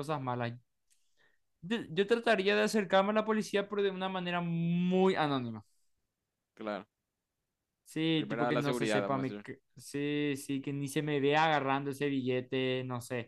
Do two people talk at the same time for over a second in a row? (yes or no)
yes